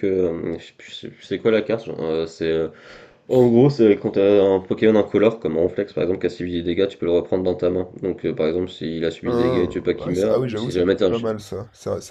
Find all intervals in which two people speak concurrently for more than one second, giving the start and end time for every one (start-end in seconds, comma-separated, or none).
9.2-11.1